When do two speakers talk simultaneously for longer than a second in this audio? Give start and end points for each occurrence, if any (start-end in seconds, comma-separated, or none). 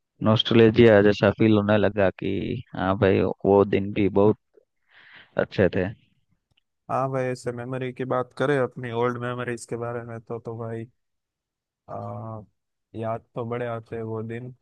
none